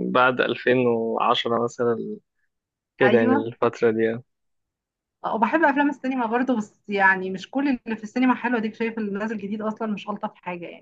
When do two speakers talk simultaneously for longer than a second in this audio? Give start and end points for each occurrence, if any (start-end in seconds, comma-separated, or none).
none